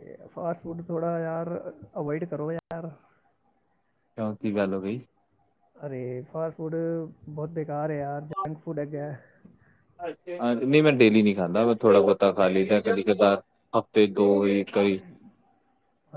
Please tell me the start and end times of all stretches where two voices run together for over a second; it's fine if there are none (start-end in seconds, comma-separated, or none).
none